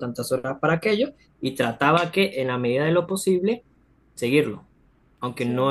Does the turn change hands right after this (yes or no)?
no